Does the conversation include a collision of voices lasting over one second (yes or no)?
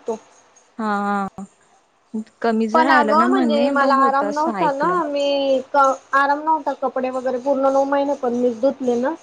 yes